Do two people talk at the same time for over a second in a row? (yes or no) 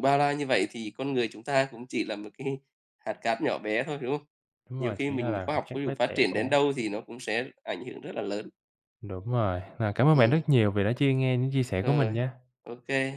yes